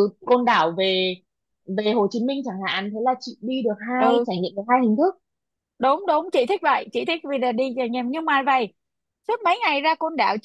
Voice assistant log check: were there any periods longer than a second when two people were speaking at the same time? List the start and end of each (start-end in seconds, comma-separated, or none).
none